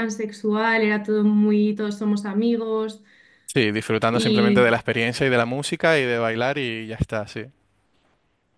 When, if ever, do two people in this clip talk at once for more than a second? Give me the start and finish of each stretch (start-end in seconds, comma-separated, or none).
none